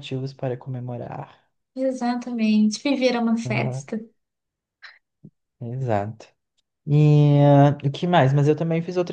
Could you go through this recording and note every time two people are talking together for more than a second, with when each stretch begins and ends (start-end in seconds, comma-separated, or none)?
none